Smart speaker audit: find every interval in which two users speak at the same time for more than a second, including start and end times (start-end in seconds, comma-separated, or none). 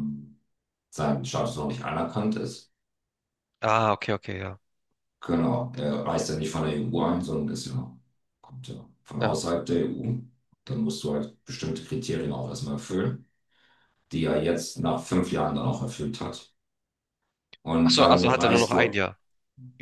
17.8-19.1